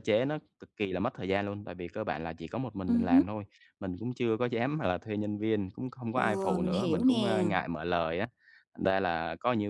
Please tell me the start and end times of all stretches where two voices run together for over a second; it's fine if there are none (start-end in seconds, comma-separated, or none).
6.1-7.4